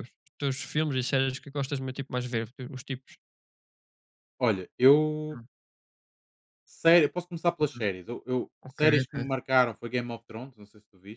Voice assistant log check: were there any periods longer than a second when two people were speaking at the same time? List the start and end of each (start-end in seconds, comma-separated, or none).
none